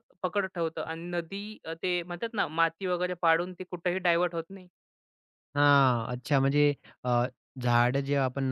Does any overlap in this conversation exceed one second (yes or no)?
no